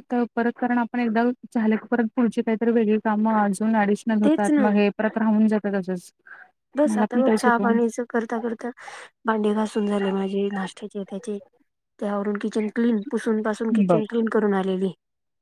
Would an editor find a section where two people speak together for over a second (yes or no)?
no